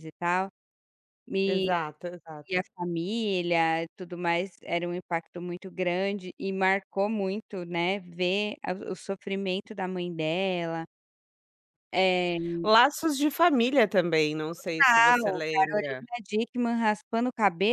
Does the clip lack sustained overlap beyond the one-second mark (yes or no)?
no